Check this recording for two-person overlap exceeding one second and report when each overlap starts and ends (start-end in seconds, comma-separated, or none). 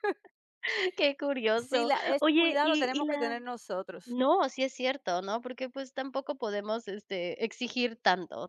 1.6-3.4